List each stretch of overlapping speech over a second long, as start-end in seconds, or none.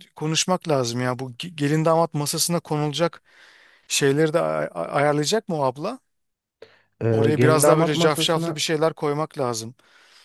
7.1-8.7